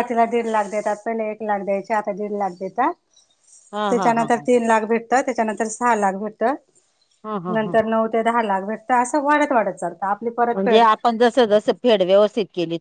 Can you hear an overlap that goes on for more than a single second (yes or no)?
no